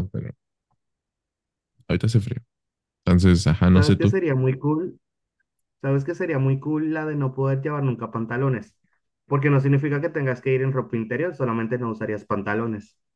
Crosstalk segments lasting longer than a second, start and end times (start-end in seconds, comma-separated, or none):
none